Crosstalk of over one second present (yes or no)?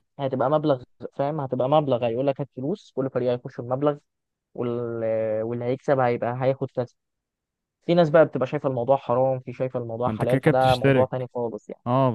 yes